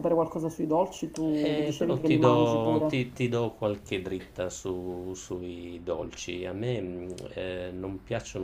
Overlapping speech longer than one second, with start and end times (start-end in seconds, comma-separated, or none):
1.4-3.0